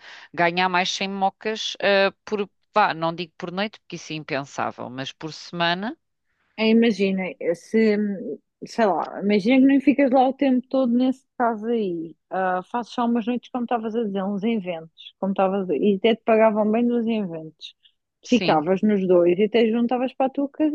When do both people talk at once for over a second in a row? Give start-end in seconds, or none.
none